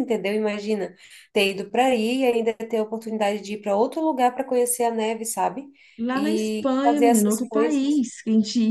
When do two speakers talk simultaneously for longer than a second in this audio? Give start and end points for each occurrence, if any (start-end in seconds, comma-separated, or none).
6.1-8.0